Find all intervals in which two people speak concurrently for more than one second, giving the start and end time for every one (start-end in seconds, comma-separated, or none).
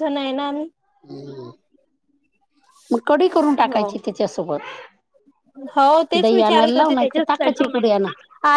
6.2-7.7